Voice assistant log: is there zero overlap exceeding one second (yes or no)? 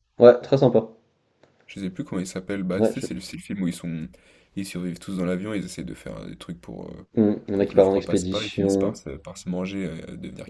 no